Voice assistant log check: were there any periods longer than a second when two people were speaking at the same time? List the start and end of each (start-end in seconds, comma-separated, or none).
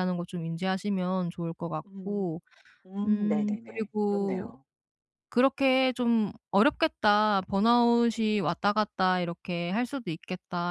3.0-4.5